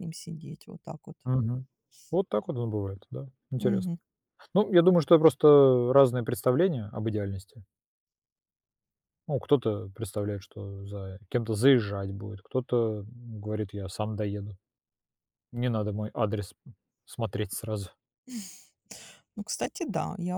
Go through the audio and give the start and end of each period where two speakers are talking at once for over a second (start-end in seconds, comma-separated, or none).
none